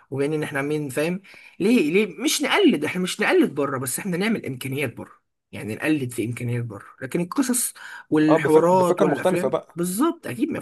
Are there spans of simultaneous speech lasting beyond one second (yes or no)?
yes